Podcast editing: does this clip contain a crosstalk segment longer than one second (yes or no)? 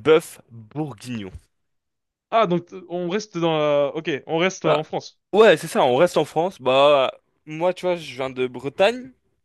no